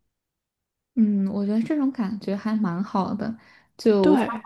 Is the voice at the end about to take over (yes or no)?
no